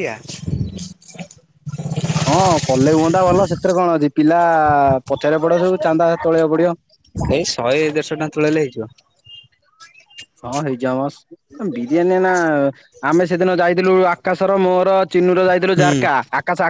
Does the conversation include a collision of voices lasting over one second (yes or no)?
no